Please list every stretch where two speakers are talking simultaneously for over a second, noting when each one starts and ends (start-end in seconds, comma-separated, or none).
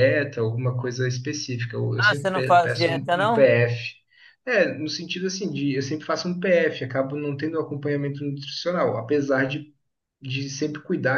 2.0-3.5